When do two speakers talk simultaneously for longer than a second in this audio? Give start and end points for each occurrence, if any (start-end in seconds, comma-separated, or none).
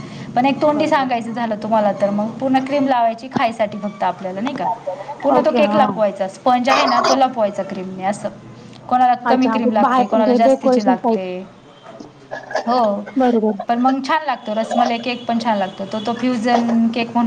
9.3-11.2